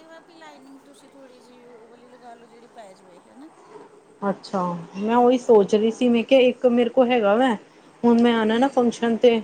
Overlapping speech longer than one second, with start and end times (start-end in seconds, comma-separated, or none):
none